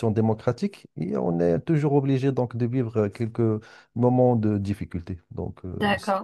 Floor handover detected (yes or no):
yes